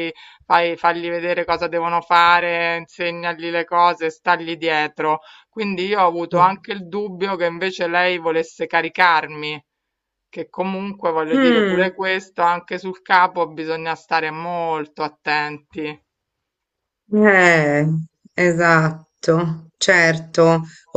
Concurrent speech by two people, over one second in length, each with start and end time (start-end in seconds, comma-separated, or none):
none